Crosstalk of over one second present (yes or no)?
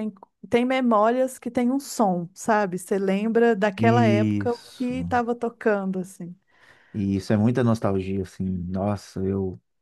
yes